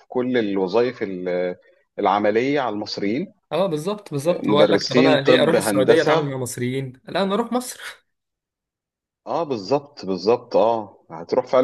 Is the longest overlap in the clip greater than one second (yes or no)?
yes